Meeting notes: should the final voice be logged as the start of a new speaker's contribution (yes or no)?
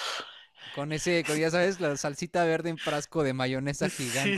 yes